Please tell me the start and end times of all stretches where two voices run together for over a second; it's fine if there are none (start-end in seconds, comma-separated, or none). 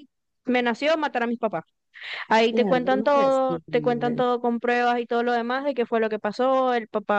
2.5-4.2